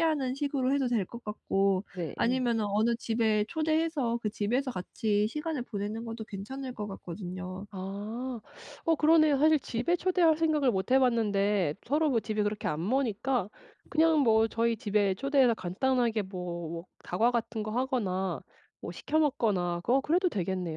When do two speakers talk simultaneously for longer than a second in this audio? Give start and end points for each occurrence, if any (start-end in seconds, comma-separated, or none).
none